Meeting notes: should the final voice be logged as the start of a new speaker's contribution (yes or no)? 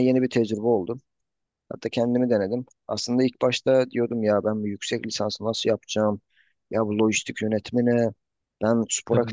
yes